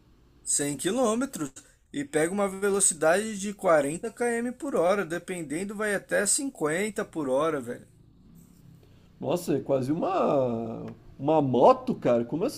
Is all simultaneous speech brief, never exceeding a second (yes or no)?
yes